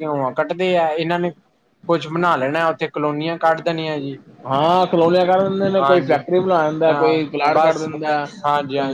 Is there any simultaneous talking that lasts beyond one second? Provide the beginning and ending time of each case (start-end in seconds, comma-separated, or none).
none